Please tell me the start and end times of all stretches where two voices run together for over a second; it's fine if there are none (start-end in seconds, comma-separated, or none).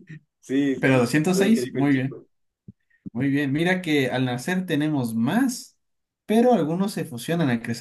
0.8-2.2